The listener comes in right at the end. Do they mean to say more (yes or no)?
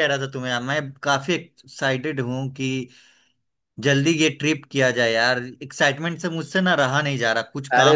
yes